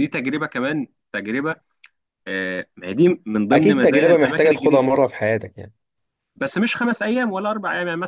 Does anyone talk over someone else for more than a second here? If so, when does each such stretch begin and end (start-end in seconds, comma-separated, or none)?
3.5-4.8